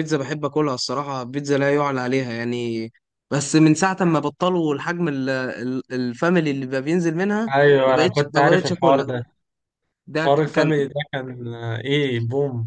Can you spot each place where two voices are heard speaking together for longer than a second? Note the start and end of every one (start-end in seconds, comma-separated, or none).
7.5-9.1